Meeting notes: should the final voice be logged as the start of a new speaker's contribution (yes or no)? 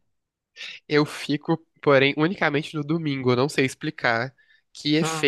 no